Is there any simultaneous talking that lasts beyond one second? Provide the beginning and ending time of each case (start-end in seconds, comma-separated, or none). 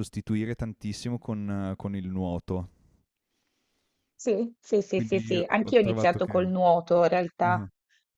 4.9-6.5